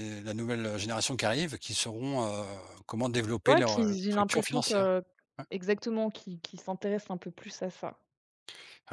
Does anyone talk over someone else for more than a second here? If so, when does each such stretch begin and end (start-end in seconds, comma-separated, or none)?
3.5-4.9